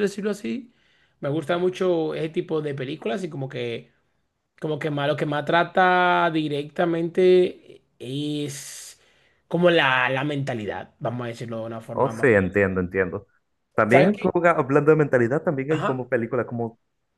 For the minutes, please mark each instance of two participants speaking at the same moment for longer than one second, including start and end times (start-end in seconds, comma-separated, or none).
none